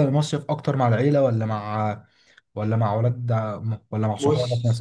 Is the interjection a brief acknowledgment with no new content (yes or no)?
no